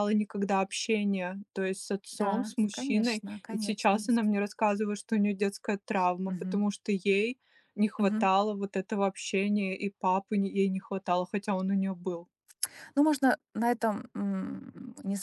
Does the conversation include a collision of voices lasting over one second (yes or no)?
yes